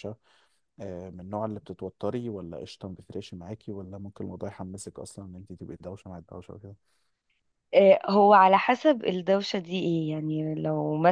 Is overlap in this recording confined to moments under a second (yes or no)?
yes